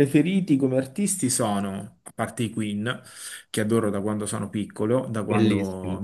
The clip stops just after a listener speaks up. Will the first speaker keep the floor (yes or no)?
yes